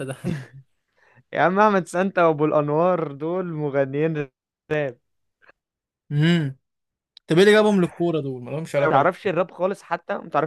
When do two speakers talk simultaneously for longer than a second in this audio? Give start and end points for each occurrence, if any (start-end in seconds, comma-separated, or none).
none